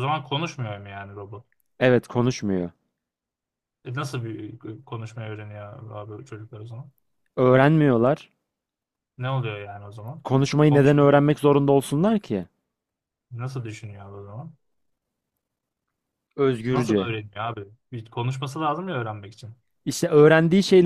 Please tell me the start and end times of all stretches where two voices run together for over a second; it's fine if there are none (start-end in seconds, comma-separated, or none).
none